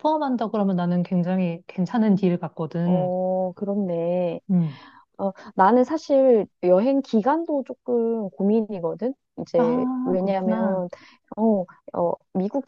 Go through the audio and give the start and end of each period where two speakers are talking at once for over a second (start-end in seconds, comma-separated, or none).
9.6-10.8